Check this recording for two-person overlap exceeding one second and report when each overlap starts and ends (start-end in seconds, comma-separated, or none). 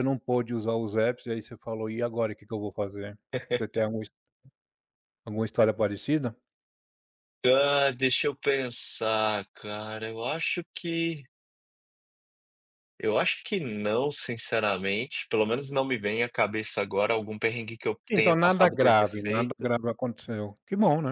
18.1-19.7